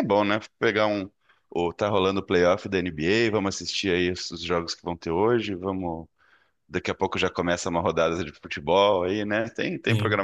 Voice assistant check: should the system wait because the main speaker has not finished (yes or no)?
yes